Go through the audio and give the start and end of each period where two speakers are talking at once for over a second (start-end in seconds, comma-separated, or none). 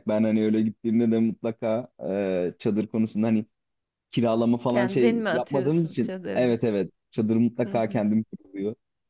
4.7-6.6